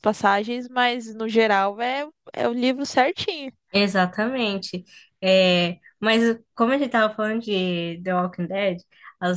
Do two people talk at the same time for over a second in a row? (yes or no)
no